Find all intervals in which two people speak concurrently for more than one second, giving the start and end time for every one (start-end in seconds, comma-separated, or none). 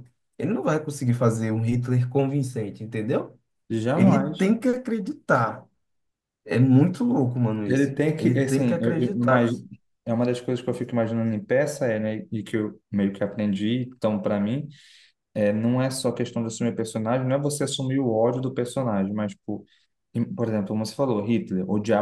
7.7-9.5